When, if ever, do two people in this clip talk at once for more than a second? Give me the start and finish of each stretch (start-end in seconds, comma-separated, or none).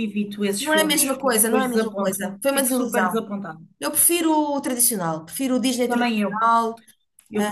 0.6-3.2